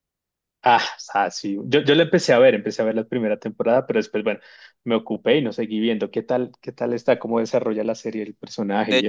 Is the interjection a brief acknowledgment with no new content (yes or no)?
no